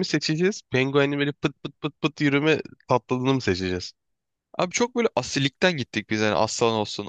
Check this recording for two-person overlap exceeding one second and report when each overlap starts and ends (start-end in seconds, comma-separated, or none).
none